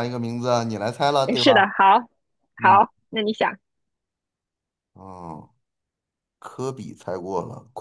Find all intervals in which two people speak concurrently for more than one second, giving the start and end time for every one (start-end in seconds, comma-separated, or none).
none